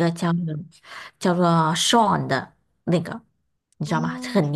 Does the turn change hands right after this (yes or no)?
no